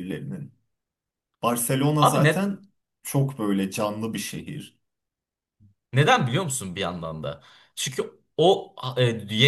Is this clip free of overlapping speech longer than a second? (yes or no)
yes